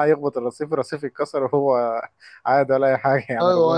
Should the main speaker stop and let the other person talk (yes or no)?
yes